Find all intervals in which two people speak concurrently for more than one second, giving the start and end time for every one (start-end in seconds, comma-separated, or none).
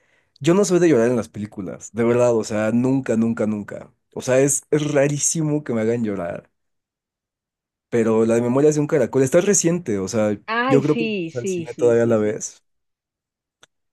10.5-12.4